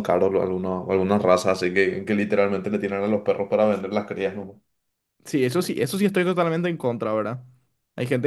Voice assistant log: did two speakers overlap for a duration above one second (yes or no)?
no